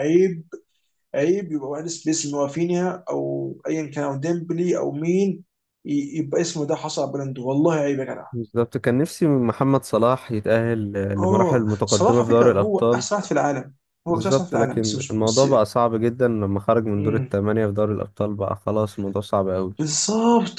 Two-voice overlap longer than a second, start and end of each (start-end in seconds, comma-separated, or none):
11.2-13.1, 14.1-15.4